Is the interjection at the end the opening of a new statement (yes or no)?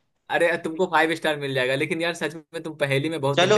yes